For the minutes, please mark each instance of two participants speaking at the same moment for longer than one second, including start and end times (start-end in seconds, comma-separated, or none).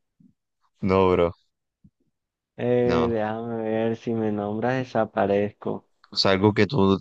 none